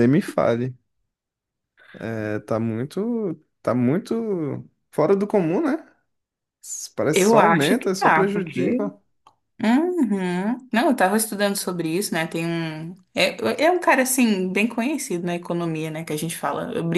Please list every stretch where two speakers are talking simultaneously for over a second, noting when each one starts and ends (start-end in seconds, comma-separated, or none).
7.1-8.8